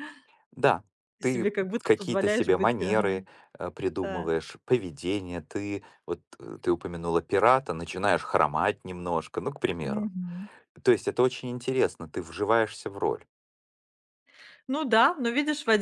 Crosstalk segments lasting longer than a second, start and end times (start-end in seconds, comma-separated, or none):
1.2-3.1